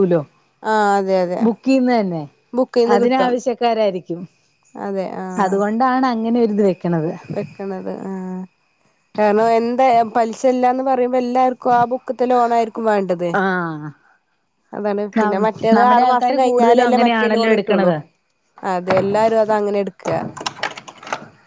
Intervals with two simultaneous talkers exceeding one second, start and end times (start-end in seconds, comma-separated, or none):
15.8-17.9